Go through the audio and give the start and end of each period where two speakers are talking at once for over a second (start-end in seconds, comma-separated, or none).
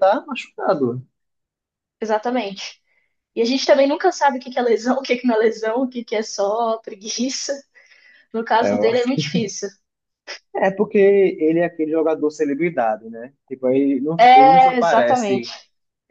14.2-15.5